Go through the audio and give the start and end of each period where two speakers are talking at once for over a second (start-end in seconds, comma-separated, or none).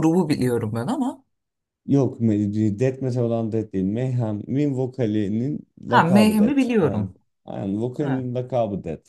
5.9-7.1